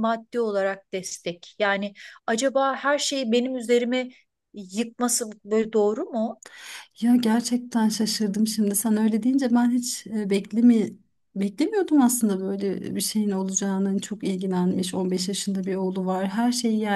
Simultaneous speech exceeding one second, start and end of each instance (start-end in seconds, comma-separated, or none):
none